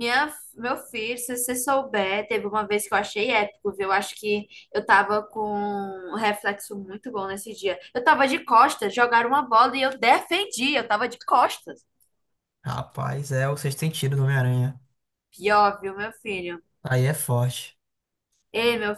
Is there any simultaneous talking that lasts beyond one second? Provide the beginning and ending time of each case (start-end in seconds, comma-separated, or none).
none